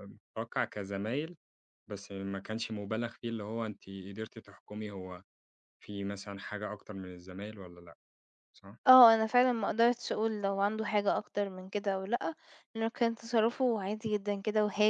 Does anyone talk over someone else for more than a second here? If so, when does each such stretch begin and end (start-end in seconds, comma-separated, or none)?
none